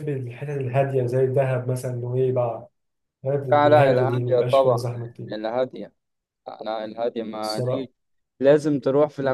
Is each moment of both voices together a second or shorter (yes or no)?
no